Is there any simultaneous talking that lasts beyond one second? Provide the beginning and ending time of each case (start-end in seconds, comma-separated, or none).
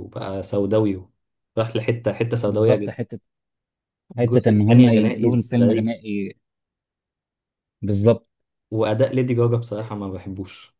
4.2-6.0